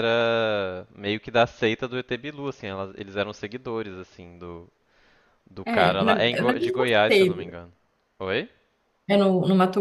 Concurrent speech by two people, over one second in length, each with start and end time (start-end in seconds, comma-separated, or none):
5.7-7.6